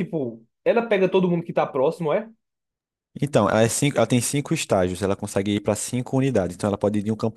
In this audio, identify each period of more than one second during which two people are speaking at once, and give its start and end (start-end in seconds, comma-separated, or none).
none